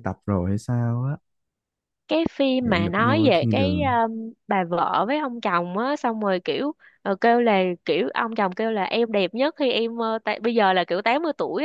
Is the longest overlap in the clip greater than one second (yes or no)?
yes